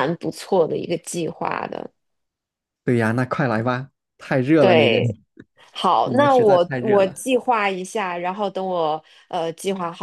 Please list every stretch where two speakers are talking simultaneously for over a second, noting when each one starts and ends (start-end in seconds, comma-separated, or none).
6.0-7.2